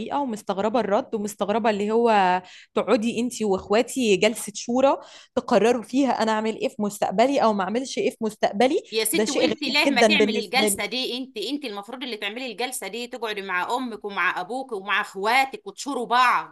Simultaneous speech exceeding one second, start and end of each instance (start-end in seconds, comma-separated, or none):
8.9-10.8